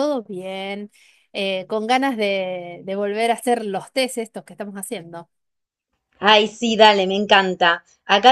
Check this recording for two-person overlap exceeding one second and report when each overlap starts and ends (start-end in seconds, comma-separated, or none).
none